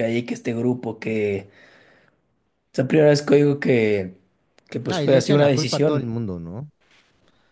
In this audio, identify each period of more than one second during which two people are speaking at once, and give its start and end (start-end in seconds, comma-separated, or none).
4.9-6.1